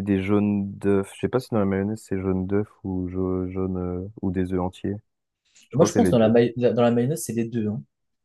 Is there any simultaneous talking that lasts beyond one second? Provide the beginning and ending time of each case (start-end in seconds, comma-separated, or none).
none